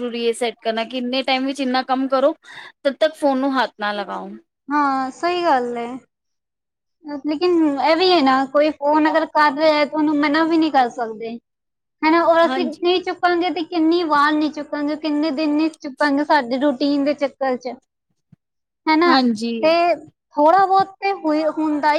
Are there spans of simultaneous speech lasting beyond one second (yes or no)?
no